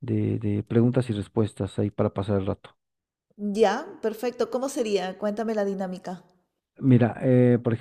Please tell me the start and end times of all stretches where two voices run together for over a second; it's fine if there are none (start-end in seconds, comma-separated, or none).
none